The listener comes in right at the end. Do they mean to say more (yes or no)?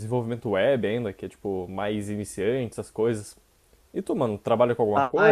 yes